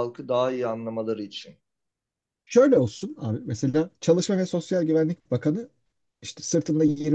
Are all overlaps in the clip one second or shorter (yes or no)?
yes